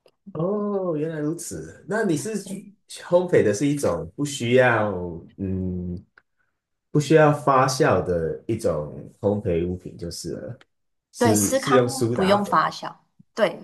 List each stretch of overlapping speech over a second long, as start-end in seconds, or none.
11.2-12.6